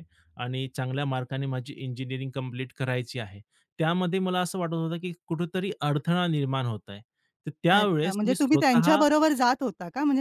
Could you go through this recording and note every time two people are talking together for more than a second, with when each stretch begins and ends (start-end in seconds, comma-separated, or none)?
7.7-9.0